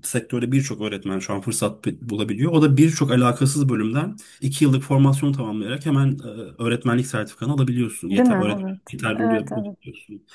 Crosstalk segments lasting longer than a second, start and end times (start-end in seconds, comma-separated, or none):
8.1-9.8